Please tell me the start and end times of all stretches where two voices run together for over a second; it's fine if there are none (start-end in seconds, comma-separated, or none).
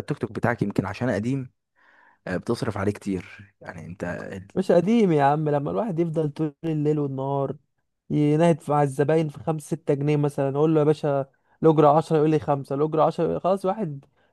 none